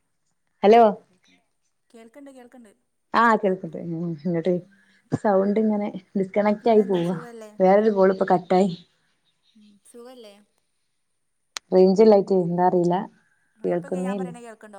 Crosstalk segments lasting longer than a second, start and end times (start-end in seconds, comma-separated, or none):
none